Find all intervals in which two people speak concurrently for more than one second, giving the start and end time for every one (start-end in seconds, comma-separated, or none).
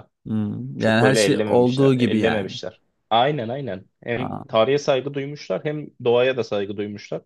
0.8-2.5